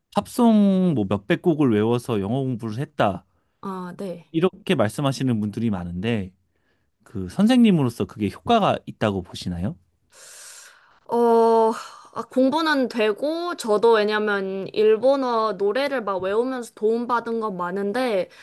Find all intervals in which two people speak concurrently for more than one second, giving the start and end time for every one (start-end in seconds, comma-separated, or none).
none